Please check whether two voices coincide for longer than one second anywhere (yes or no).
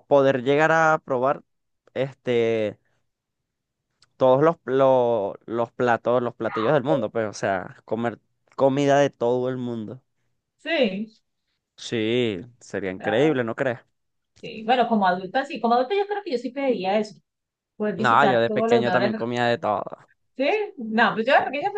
yes